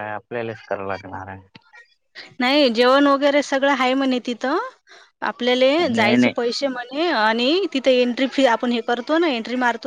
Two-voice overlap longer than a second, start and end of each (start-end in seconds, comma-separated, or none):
none